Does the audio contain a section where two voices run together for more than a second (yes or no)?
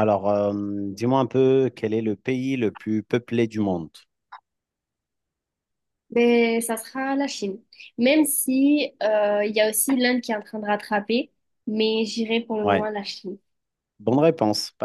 no